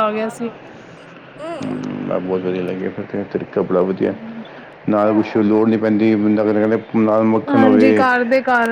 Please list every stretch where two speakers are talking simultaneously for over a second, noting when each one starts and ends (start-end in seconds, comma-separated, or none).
none